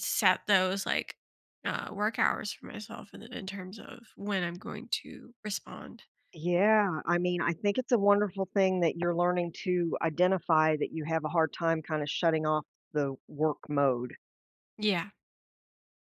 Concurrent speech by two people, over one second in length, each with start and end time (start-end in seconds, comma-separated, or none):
none